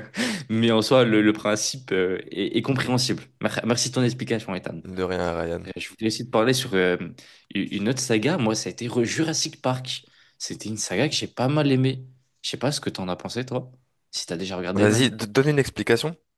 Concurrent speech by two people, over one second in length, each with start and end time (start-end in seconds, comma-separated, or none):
none